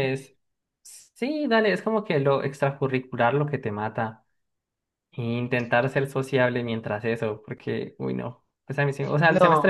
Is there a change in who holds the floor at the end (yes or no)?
no